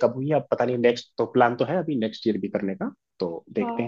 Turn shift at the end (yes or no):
yes